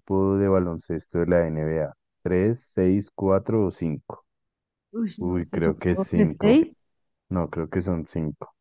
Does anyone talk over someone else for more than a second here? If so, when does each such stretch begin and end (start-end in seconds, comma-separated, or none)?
5.2-6.6